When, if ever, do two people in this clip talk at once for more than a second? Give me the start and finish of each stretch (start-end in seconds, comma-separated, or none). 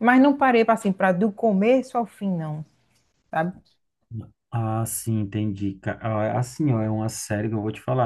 none